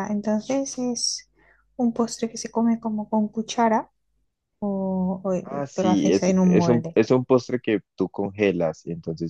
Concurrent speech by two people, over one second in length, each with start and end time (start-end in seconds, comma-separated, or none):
5.4-7.0